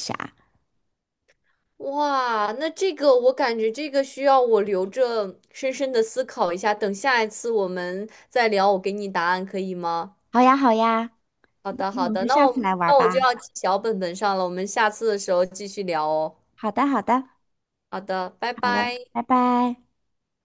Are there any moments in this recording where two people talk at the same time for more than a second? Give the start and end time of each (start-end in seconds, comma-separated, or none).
11.9-13.3